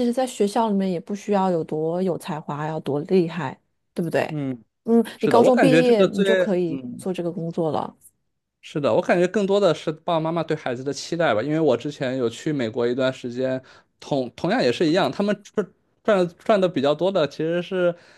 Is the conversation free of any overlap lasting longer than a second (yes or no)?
no